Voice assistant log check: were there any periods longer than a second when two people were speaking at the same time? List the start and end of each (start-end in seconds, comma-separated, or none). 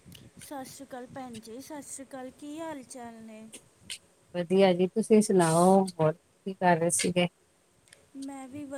none